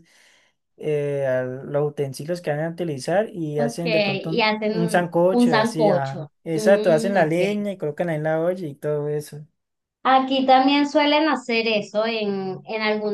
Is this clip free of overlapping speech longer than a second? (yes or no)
no